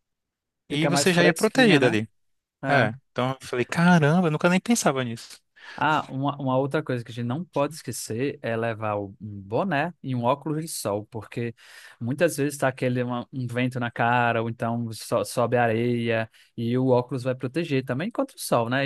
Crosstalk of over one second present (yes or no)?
yes